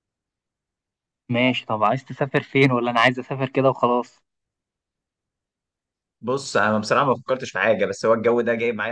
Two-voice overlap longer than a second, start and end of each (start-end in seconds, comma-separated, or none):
none